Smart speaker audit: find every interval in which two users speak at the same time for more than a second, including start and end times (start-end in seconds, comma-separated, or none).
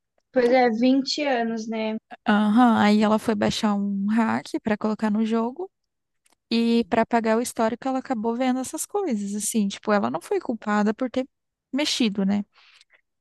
none